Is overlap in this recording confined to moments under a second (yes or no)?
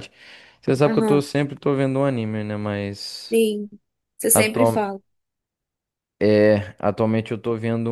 yes